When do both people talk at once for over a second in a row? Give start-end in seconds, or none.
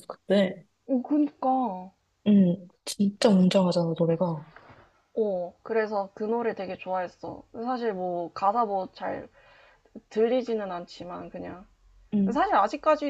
none